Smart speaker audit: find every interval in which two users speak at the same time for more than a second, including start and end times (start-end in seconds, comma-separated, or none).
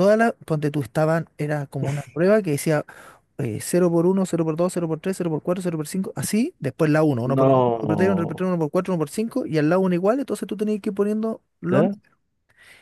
7.2-8.5